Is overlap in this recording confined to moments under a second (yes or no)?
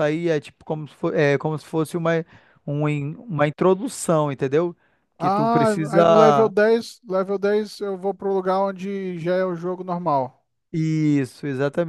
no